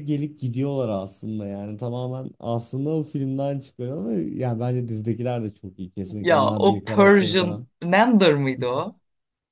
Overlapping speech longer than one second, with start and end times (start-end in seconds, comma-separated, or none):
6.2-7.7